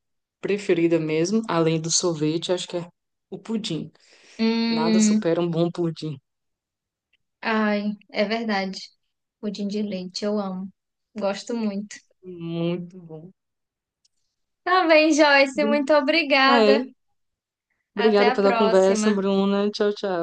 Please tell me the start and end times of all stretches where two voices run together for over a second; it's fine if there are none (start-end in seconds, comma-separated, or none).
18.0-19.2